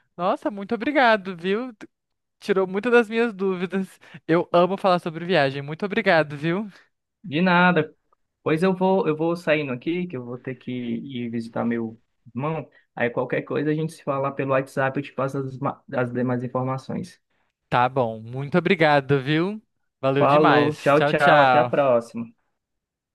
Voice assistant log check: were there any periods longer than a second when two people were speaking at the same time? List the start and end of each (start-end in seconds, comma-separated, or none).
20.2-21.9